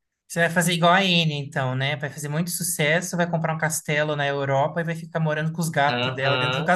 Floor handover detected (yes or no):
yes